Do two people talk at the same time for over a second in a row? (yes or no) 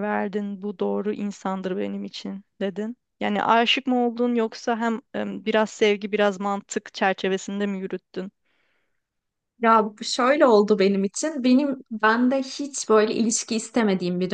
no